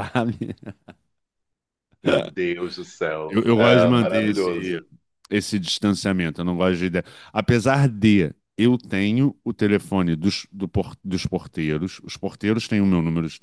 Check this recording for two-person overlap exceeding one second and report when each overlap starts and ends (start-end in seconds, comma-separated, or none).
3.3-4.8